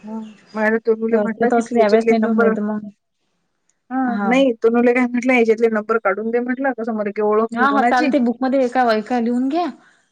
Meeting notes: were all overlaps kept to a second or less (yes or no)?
no